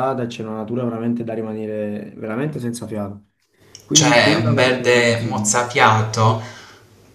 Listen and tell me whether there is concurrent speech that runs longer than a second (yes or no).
yes